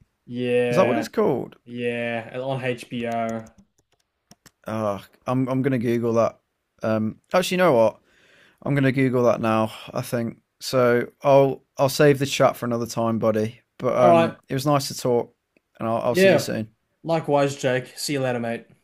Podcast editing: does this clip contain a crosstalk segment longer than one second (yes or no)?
no